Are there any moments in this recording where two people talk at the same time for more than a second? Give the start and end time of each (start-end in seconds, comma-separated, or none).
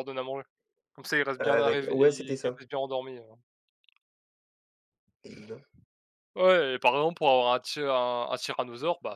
1.4-2.6